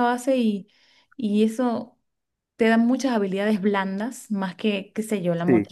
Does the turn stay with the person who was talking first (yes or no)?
yes